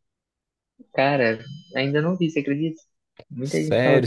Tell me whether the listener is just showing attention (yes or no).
no